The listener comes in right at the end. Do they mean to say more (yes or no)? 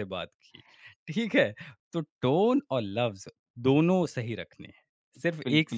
yes